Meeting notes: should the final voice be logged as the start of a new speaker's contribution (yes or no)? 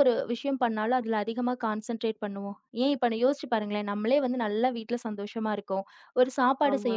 no